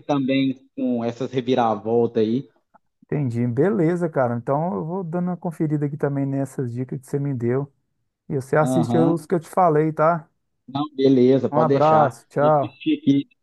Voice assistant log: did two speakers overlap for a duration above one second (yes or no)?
yes